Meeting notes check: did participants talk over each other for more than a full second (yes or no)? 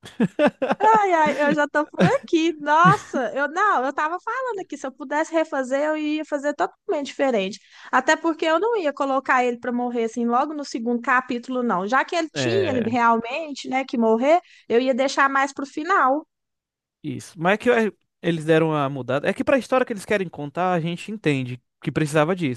no